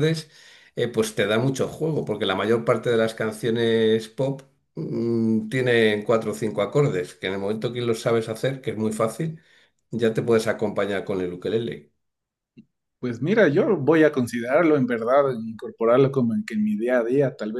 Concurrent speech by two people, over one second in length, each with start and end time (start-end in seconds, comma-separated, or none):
none